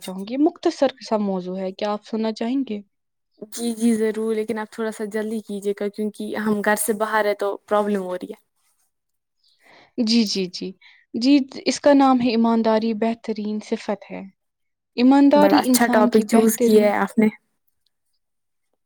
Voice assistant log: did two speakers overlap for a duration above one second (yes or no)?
yes